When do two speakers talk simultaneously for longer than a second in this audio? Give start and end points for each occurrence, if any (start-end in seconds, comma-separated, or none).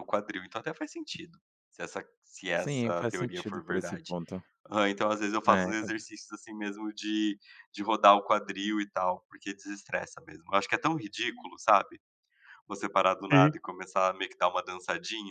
2.6-4.2